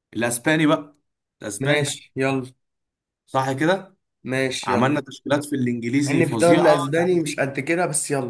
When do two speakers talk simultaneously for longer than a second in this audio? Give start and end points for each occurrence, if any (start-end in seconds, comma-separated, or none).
6.1-7.4